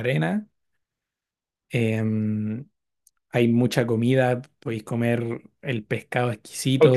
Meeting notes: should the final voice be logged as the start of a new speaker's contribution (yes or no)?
yes